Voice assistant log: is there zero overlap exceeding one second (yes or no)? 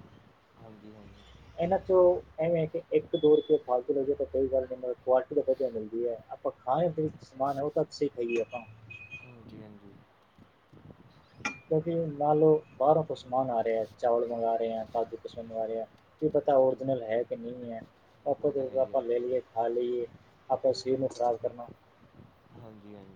yes